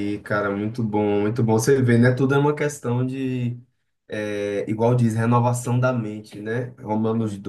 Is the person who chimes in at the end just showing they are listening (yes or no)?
yes